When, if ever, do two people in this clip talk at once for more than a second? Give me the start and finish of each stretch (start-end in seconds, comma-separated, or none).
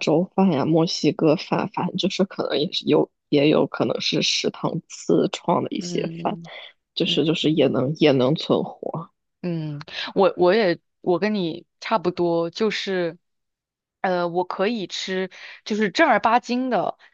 none